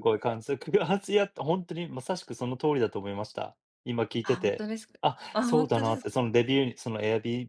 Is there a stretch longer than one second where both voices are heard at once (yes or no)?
yes